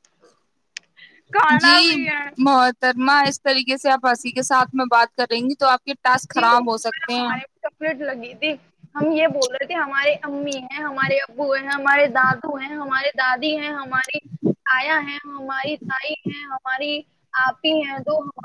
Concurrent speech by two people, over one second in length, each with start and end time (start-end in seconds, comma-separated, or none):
none